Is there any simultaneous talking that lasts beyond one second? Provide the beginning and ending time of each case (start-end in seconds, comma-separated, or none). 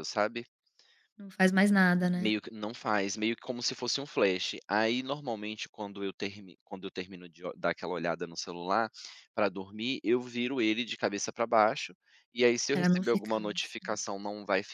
12.7-14.0